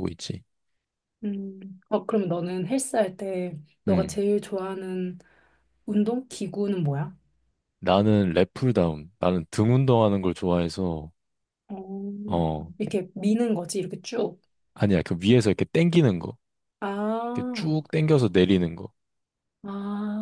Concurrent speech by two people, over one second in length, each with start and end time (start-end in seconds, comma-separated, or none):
none